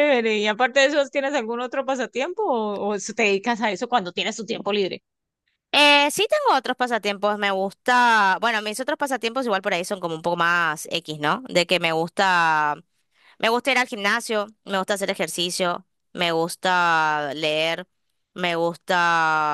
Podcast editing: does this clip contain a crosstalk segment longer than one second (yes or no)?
no